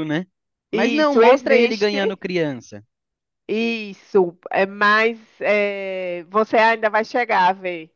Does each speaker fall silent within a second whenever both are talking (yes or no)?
no